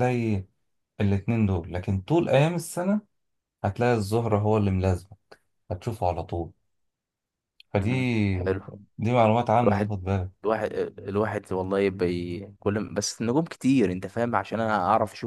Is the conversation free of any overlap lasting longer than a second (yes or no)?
yes